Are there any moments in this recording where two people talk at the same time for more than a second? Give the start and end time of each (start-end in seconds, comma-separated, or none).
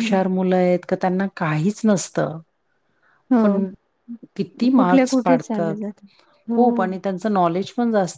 4.4-5.8